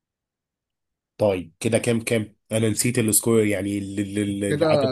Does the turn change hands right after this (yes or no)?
yes